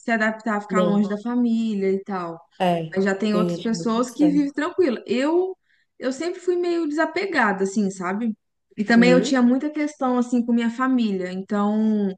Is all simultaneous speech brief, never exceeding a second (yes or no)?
no